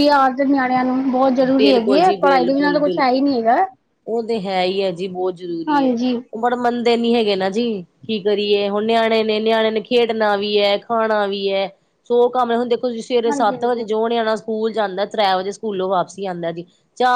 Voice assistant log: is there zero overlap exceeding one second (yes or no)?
no